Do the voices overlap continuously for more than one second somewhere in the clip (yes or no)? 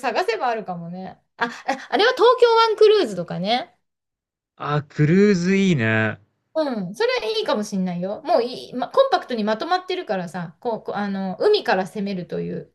no